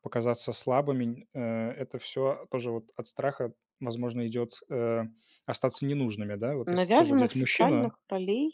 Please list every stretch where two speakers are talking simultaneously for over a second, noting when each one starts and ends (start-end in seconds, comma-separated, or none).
6.7-7.9